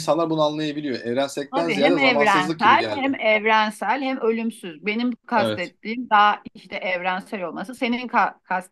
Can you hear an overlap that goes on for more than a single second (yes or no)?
yes